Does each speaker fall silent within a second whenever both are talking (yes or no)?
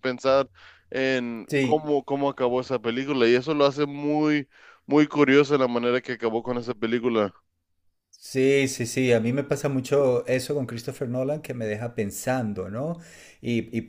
yes